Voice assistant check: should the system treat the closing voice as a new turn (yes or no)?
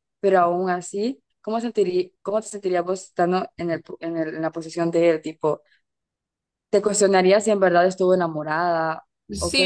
yes